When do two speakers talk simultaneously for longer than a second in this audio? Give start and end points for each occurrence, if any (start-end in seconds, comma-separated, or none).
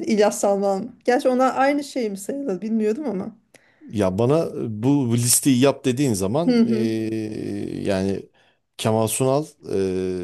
none